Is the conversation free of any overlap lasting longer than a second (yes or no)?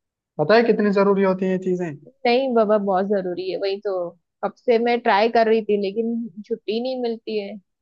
yes